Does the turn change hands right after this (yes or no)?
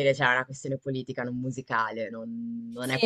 yes